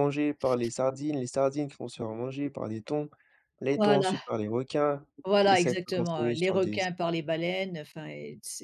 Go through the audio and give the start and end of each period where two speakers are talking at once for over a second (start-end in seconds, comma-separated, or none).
5.4-6.8